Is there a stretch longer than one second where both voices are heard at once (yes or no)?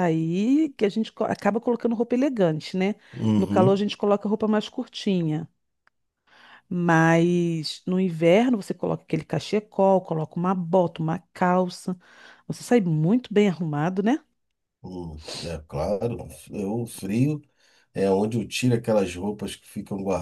no